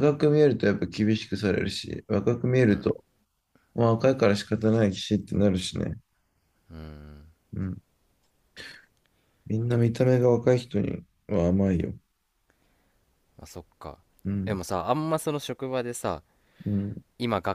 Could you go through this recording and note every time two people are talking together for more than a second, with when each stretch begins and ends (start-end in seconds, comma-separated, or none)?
none